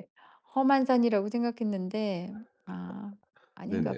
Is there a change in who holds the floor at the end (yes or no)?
yes